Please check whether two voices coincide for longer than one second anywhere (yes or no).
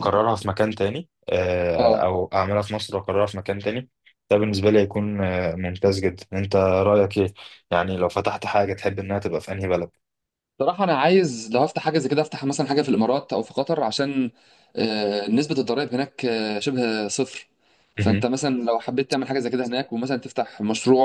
no